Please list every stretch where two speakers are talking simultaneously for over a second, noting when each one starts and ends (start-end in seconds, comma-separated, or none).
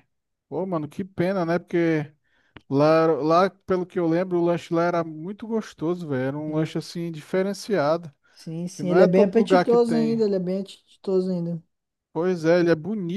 8.7-10.2